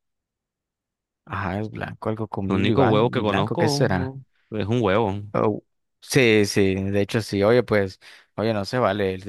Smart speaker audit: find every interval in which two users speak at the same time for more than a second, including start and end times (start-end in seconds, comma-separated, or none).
2.5-3.9